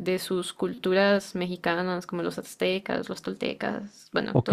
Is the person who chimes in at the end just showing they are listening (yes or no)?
yes